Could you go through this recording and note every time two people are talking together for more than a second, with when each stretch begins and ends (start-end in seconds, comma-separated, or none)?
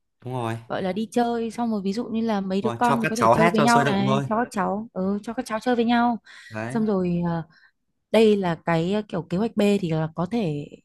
2.6-4.2